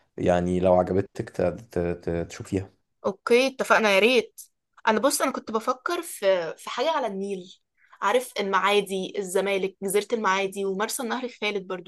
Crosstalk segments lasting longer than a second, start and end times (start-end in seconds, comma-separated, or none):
none